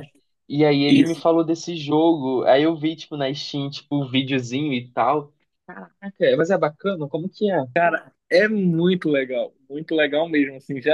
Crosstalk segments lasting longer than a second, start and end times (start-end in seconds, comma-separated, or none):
none